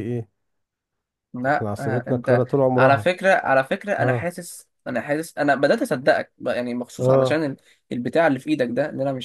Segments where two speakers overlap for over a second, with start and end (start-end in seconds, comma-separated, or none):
1.5-3.1